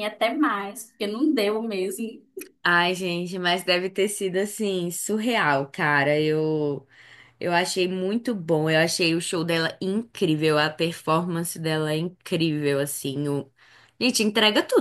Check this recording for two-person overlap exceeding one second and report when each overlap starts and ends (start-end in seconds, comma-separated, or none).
none